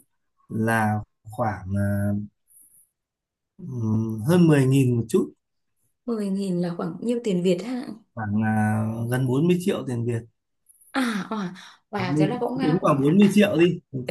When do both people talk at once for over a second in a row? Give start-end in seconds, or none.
12.0-13.4